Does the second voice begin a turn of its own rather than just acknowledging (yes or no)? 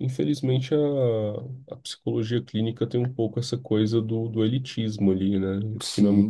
yes